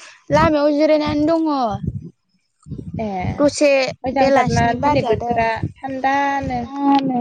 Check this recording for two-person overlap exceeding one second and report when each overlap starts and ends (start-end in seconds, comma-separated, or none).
4.2-6.6